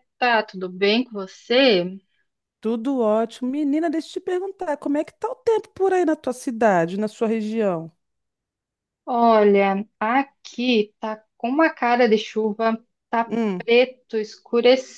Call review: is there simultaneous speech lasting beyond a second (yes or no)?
no